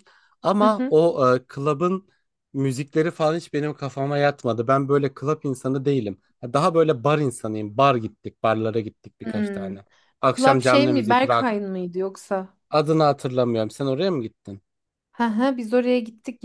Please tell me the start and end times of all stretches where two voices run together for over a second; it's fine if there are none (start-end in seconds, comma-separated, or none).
10.4-11.6